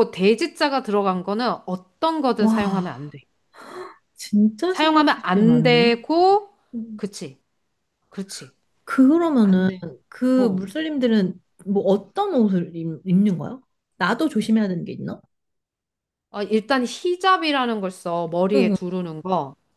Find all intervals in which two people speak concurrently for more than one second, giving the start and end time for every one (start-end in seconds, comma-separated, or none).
4.7-6.0